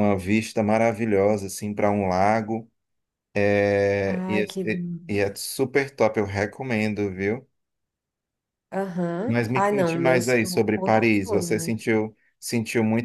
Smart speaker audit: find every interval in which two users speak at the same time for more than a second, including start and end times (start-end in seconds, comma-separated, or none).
9.3-11.7